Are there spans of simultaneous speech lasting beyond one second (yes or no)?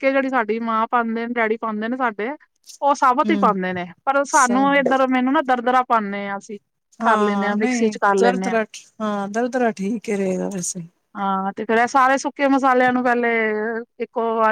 yes